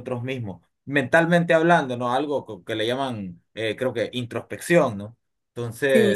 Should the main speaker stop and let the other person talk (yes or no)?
no